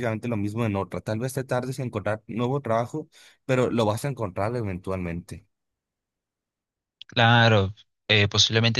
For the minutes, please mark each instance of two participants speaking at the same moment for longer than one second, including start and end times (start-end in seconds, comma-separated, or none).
none